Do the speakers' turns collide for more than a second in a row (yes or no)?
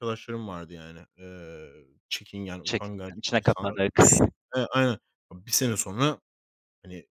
yes